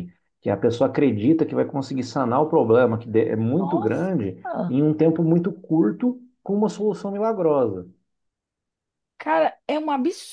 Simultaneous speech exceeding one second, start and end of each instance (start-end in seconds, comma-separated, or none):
none